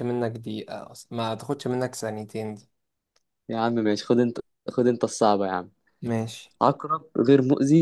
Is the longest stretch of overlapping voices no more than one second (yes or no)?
yes